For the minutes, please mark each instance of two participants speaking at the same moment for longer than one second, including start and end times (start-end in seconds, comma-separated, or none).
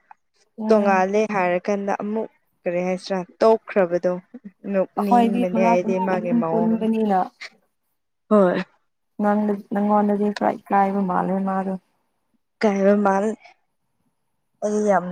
5.0-6.8